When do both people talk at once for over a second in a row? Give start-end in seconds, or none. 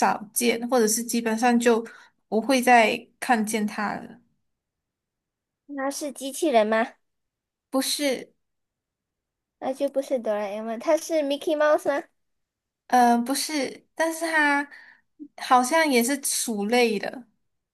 none